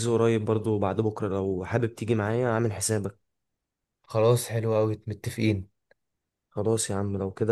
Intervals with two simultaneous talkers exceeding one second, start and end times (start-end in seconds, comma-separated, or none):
none